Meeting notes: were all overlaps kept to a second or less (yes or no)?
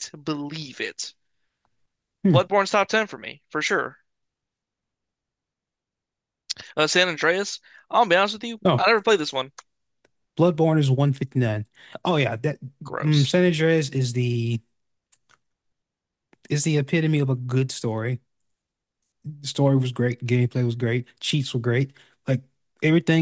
yes